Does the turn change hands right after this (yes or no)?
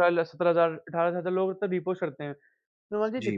no